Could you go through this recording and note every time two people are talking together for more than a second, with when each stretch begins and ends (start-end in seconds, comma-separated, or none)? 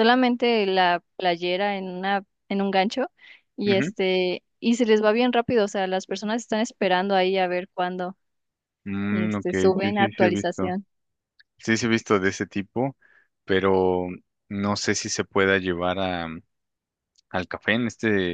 9.1-10.7